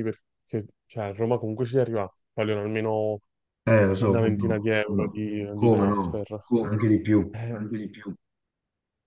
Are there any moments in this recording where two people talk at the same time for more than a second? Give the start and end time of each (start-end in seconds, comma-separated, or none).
4.0-6.2